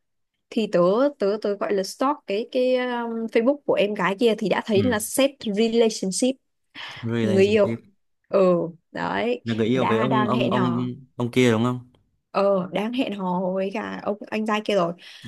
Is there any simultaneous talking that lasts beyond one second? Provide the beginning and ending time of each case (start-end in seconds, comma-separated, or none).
9.4-10.8